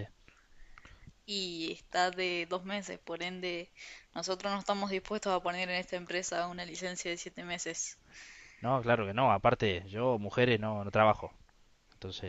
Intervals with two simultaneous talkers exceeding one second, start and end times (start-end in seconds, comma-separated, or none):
none